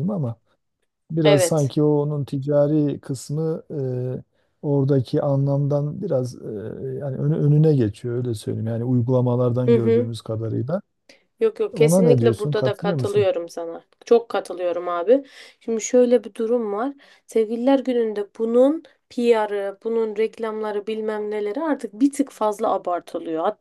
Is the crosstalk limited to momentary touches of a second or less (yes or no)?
no